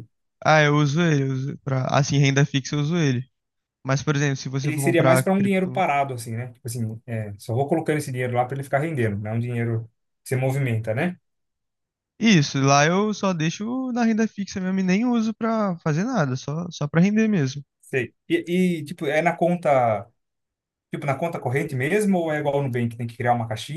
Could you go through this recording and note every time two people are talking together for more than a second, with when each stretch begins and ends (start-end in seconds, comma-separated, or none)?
4.6-5.8